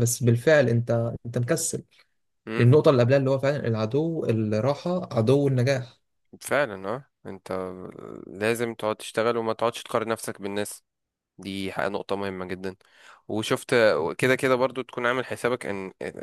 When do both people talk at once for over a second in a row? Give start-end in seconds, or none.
none